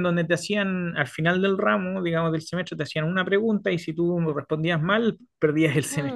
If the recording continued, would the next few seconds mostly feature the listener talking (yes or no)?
yes